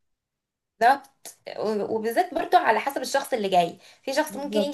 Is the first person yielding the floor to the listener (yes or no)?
no